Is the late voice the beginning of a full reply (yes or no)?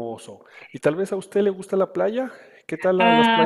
yes